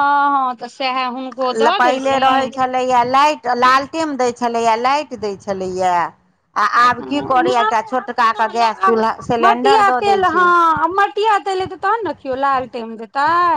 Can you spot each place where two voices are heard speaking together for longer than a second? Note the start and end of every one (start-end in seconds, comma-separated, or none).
7.0-9.1